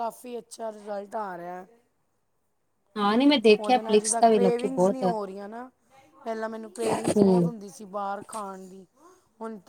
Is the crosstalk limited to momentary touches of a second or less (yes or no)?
no